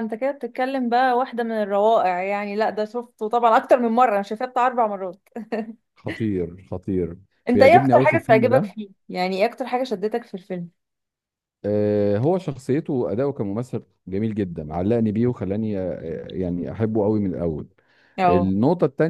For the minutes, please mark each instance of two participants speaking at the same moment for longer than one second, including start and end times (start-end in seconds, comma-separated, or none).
7.5-8.7